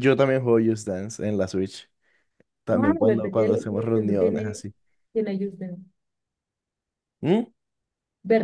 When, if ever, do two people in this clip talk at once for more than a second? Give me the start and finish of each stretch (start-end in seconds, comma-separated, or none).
2.7-4.6